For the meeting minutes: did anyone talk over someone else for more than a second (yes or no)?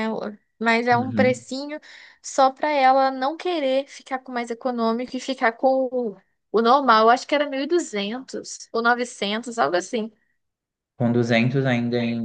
no